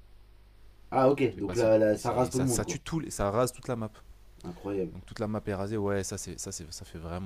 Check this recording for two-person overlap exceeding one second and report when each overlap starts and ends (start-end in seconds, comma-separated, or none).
1.2-2.8